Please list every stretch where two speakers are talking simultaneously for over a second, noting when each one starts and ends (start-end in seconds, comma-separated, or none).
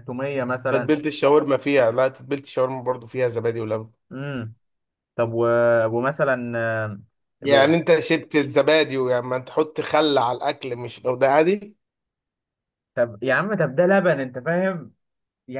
none